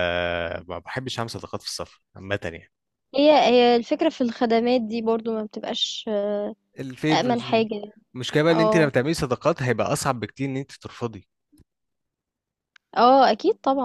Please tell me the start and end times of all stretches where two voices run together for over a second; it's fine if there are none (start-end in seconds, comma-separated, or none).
none